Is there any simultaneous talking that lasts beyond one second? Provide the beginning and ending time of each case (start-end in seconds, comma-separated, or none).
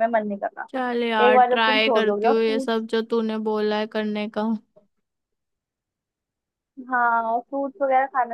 1.3-2.8